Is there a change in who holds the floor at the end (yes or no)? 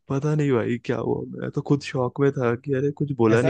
yes